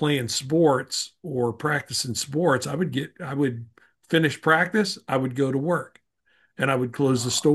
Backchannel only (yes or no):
yes